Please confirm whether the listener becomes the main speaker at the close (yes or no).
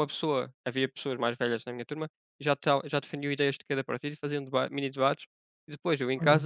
no